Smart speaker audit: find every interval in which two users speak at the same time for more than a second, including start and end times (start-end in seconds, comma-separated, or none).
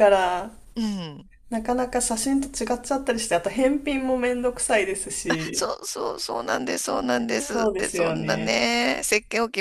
7.4-8.6